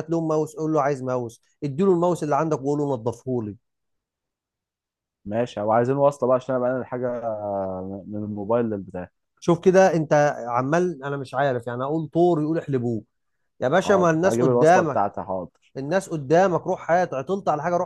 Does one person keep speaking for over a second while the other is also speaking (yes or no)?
yes